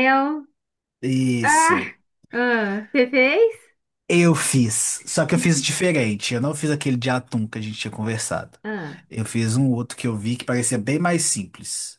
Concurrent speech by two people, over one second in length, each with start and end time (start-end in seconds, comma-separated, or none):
none